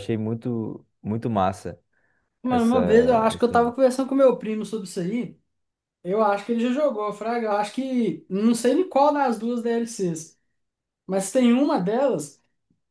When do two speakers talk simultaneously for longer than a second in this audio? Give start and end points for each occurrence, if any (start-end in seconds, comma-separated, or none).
2.5-3.7